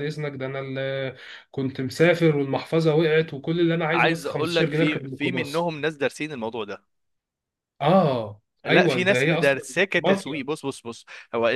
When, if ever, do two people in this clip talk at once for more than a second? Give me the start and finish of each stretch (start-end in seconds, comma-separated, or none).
3.9-5.7, 8.6-10.4